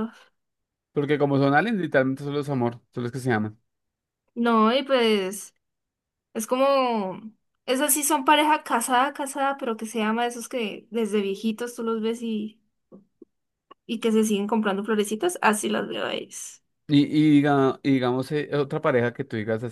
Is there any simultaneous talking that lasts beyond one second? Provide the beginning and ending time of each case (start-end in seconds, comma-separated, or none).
none